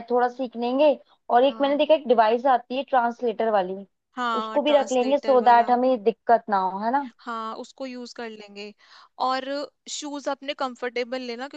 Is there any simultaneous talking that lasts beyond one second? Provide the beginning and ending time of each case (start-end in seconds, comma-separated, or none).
4.4-5.7